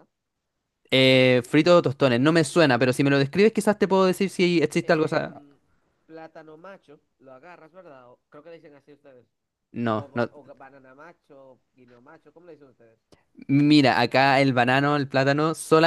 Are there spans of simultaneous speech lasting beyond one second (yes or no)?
no